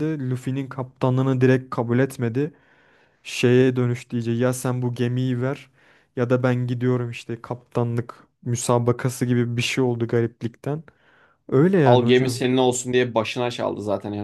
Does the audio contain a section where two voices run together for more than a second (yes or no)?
no